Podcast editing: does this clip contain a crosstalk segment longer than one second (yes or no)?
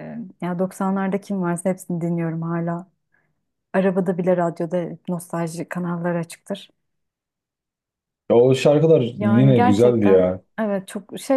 yes